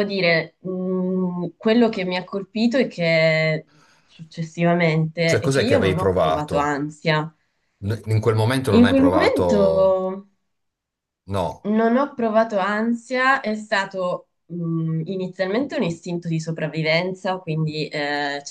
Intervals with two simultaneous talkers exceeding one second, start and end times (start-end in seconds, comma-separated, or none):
5.2-6.8, 8.7-10.0